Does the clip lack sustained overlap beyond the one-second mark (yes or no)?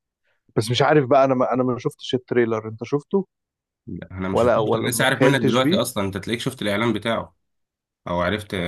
no